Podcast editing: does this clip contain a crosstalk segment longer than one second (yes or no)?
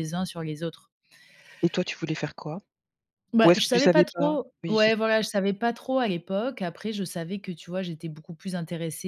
yes